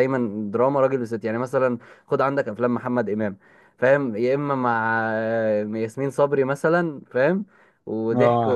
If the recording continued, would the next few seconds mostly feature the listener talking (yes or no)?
yes